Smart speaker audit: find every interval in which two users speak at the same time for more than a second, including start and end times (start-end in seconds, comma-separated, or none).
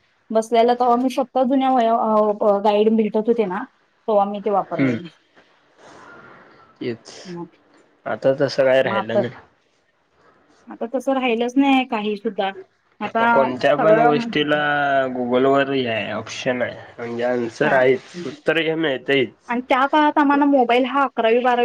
none